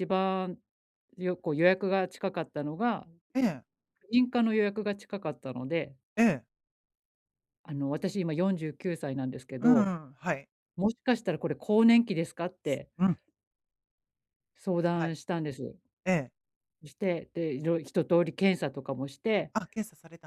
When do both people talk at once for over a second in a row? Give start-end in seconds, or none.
none